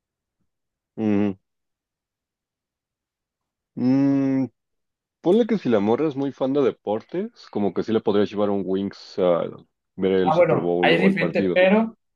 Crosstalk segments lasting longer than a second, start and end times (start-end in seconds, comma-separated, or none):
10.2-11.6